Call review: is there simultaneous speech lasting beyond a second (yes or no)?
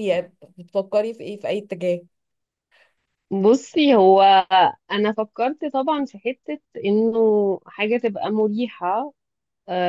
no